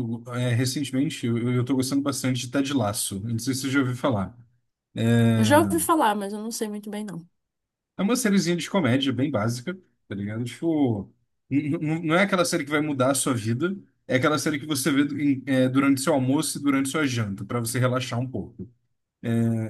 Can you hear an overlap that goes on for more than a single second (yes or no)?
no